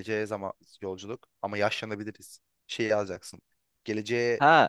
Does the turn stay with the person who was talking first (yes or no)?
no